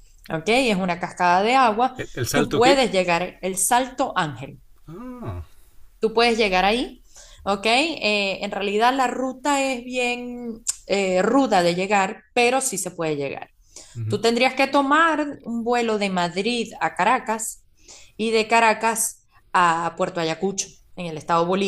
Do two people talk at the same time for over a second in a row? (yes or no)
no